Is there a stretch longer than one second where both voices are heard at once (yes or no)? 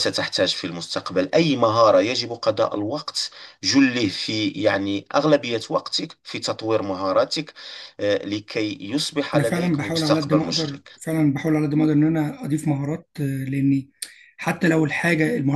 yes